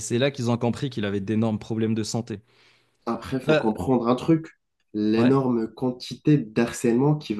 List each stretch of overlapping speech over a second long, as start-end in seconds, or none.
none